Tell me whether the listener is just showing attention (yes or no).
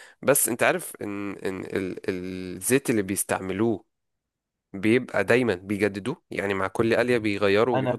no